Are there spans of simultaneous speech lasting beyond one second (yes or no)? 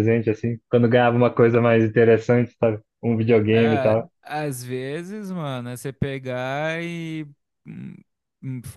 no